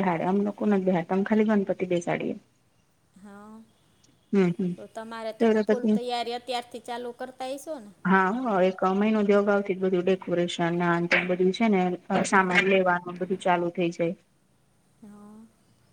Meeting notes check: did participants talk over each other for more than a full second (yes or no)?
no